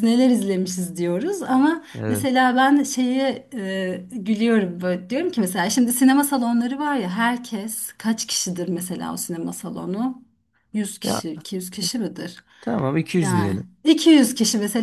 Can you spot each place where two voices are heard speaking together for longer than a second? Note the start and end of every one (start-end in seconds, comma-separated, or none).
none